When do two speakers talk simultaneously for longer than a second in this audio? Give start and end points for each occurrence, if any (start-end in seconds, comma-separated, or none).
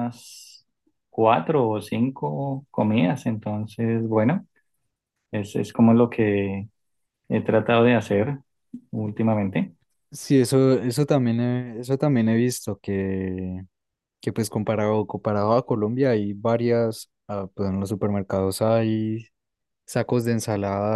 none